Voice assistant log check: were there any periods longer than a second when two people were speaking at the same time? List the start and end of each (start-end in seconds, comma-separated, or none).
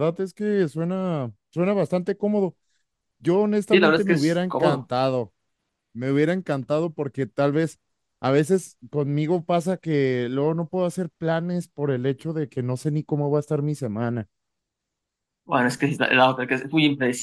3.7-4.9